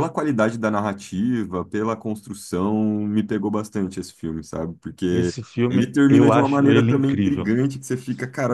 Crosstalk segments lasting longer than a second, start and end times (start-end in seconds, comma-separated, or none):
5.1-7.5